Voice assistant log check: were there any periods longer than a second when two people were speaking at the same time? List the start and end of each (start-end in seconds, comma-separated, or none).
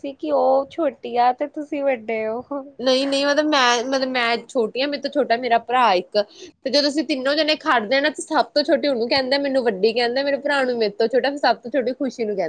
none